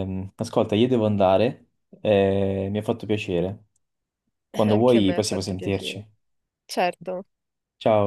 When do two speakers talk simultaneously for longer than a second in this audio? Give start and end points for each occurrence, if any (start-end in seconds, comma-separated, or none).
4.7-6.0